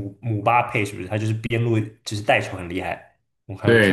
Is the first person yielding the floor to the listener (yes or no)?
yes